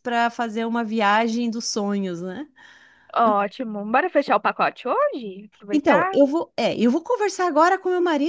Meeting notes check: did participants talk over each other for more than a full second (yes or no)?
no